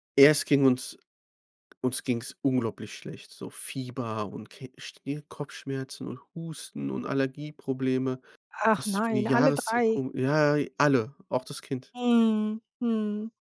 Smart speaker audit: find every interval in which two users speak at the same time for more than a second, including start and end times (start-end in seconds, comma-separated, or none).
8.8-10.0